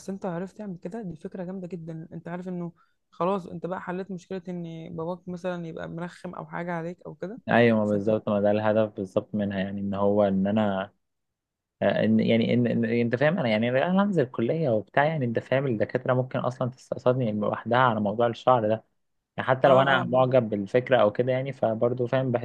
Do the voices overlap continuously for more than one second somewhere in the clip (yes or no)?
no